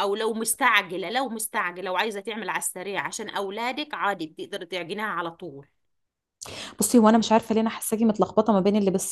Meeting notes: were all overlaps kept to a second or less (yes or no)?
yes